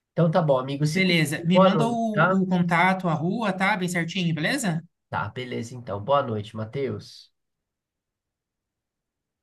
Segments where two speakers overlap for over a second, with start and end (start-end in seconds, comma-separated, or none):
0.9-2.4